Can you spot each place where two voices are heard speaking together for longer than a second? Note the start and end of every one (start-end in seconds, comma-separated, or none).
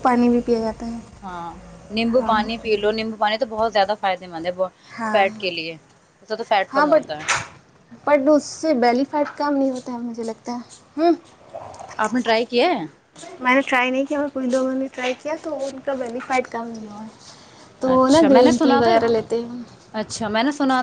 none